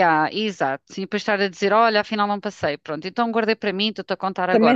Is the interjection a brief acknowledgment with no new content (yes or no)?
no